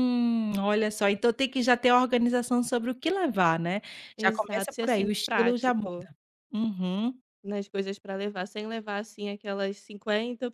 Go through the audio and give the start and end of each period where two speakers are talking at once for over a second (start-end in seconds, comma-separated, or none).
4.2-6.1